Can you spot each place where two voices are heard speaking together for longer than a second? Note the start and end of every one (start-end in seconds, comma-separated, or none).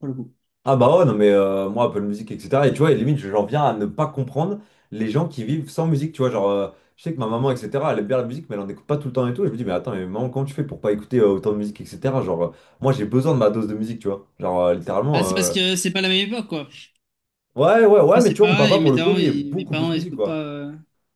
18.0-20.5